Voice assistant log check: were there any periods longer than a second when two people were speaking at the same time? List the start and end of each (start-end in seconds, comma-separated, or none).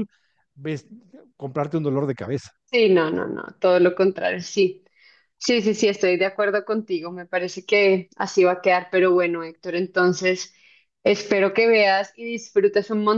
none